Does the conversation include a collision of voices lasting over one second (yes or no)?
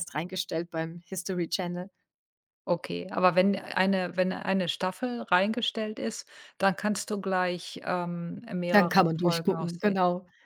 yes